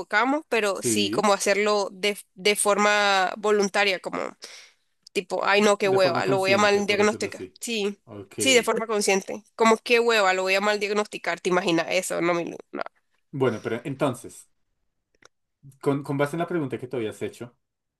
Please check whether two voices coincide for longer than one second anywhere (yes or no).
yes